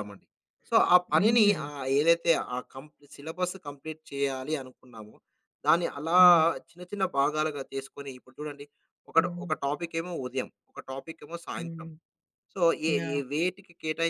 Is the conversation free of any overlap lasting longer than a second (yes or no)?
yes